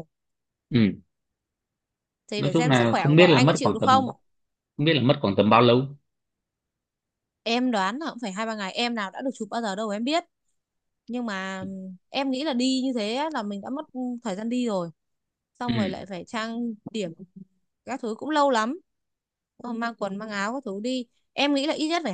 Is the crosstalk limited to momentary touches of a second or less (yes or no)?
no